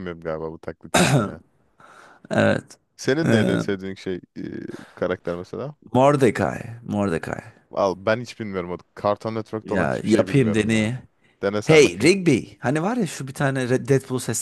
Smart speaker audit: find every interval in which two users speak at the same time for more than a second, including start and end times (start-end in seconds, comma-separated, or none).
9.6-10.9